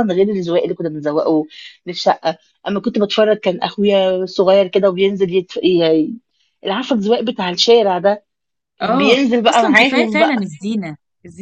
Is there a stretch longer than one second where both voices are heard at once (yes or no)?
yes